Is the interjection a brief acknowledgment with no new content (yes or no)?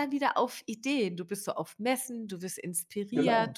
yes